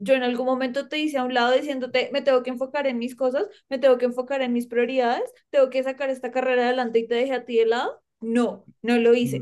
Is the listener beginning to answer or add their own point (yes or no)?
yes